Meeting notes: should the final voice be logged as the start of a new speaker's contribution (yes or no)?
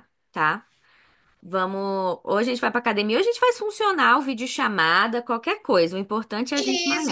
yes